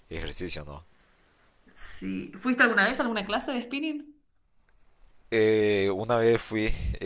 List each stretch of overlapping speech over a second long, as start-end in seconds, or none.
none